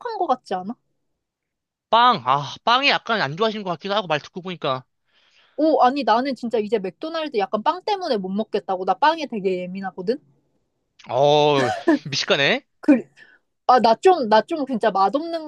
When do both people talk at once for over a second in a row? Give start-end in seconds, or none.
none